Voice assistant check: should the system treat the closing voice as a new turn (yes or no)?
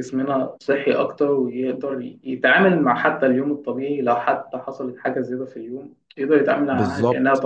yes